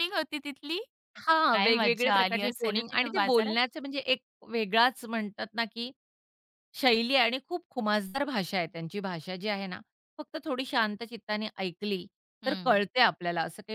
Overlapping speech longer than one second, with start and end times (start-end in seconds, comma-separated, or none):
1.5-3.6